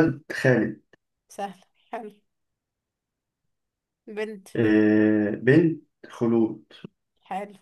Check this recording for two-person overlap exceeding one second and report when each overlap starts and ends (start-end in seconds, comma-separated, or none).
none